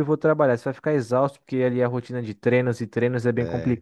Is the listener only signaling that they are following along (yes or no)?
yes